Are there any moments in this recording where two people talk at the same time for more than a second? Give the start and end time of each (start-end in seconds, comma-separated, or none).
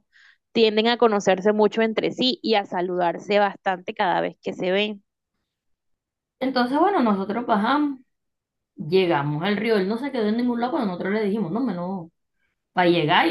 none